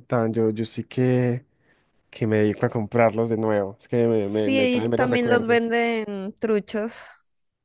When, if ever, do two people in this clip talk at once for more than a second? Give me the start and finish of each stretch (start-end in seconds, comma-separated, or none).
4.3-5.7